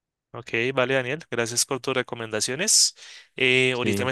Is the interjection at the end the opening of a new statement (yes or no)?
no